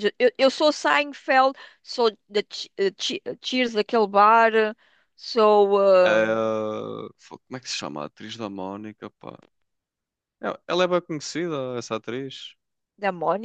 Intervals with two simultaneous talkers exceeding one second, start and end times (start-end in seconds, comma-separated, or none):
none